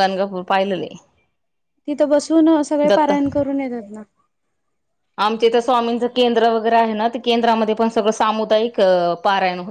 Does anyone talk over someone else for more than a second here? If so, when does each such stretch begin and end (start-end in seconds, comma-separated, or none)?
none